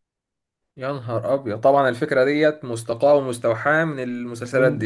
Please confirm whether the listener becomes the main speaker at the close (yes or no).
yes